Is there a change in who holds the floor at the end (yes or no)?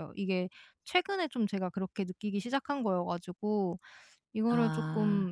no